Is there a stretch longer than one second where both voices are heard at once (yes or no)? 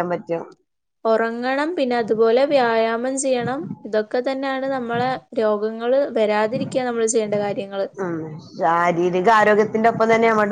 no